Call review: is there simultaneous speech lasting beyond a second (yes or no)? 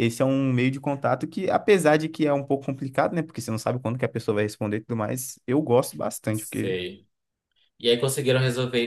no